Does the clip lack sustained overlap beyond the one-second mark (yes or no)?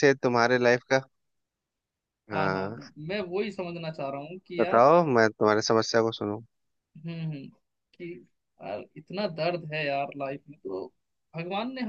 yes